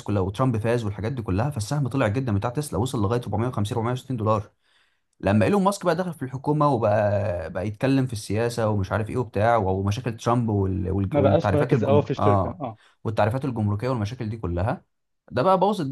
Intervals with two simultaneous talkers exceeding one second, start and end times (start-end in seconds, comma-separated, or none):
11.1-12.6